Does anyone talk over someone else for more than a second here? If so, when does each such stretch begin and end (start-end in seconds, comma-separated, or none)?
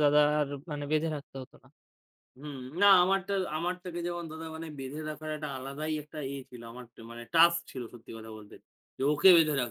none